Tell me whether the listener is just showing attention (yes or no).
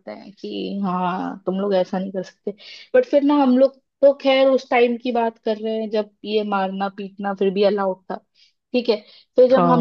yes